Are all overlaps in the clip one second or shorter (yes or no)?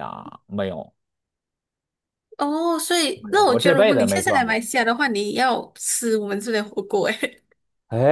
no